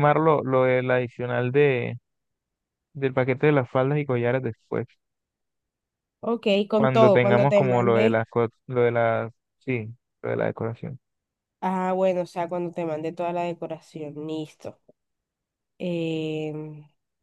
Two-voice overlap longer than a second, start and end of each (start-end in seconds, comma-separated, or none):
6.8-8.2